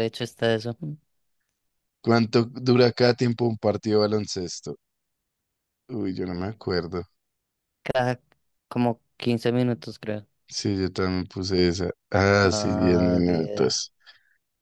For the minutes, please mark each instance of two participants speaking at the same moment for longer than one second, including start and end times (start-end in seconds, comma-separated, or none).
12.4-13.8